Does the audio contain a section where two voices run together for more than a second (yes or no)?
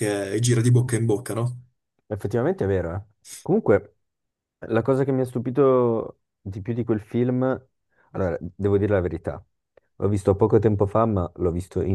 no